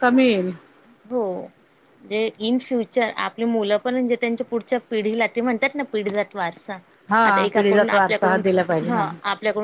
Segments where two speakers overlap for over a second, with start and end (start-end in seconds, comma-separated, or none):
none